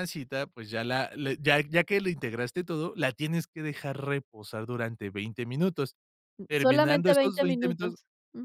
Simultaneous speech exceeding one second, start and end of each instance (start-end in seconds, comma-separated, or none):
6.5-8.0